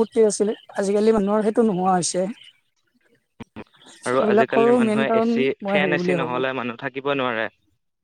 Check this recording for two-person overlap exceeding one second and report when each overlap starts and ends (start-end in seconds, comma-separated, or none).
4.2-6.4